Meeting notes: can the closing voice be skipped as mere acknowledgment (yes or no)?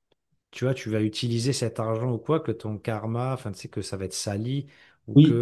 yes